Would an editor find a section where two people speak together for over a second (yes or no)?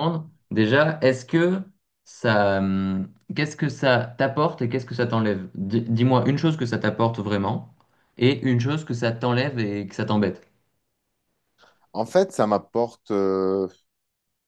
no